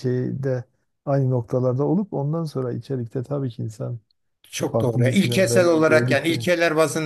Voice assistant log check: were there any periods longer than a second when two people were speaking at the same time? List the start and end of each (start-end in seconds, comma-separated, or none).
4.6-6.4